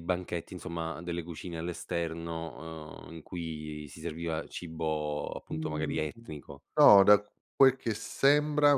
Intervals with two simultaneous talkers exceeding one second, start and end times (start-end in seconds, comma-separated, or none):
none